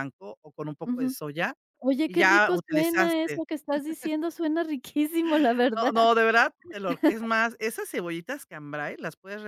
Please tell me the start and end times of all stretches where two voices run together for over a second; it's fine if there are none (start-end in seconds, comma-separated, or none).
2.1-3.4